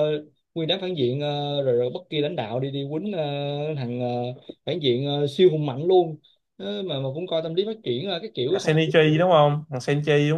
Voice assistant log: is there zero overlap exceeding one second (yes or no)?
yes